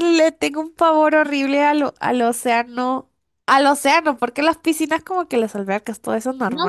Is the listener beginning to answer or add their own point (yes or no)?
yes